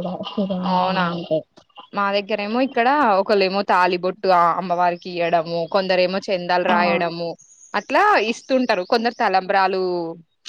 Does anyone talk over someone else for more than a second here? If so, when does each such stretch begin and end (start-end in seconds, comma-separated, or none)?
none